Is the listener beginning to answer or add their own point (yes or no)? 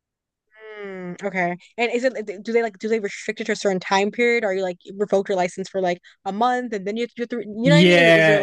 yes